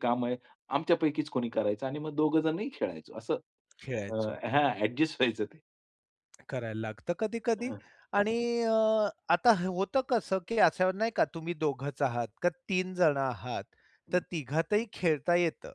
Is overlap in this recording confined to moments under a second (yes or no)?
yes